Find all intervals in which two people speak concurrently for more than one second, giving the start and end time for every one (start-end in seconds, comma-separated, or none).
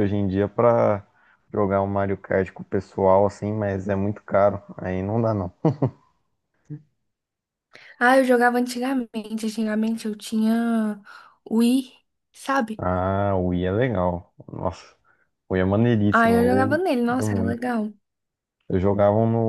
16.1-17.6